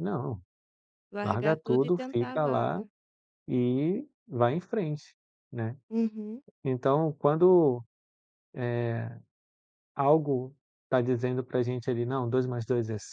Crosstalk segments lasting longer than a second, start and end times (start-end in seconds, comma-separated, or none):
1.2-2.8